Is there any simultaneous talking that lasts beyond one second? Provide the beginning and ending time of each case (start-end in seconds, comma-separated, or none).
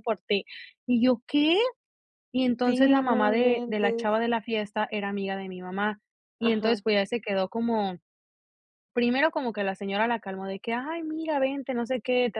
2.6-4.1